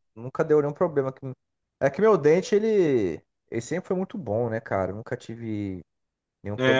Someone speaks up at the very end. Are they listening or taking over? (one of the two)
taking over